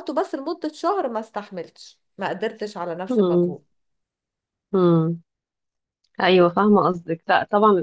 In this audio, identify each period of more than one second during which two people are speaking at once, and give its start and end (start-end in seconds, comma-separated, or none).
none